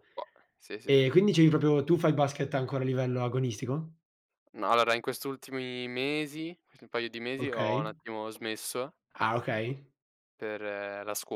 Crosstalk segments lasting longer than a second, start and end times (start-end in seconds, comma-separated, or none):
none